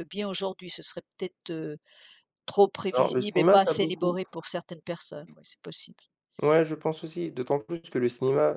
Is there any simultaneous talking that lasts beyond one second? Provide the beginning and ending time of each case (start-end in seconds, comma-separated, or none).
2.9-4.2